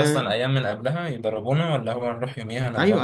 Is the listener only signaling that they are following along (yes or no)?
no